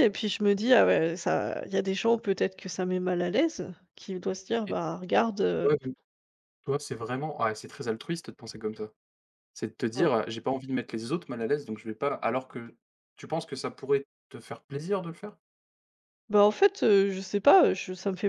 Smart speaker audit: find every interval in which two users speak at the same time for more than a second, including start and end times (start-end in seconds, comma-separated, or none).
none